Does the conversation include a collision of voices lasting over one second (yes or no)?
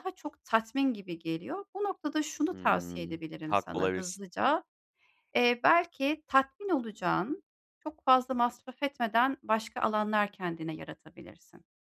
yes